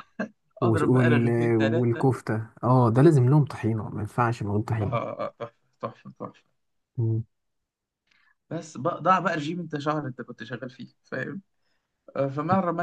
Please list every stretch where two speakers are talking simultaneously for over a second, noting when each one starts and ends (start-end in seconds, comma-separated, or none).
0.6-2.0